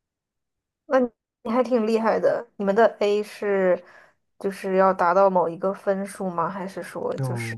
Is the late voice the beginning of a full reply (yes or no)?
yes